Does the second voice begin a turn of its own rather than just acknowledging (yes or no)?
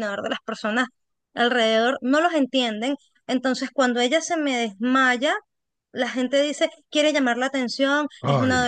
no